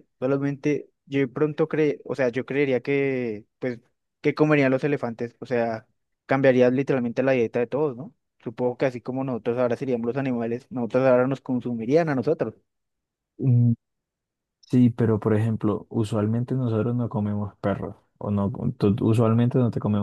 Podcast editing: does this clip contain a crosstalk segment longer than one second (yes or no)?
no